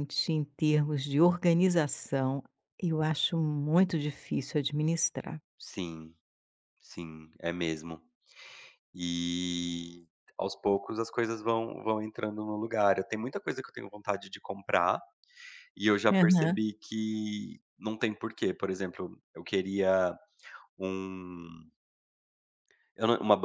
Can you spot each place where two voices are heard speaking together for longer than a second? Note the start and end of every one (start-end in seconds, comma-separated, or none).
none